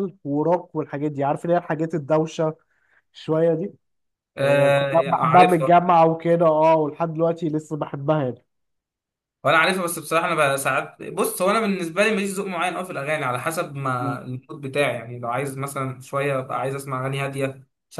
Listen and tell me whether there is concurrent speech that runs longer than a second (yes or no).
yes